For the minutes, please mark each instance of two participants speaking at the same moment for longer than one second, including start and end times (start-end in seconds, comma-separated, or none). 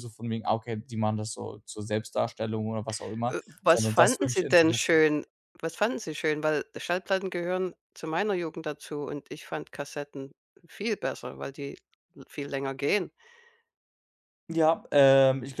3.3-5.0